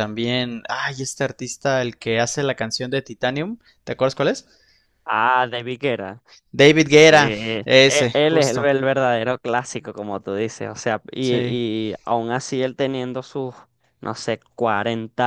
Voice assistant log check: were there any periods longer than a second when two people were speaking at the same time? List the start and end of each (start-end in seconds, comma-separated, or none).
6.8-8.7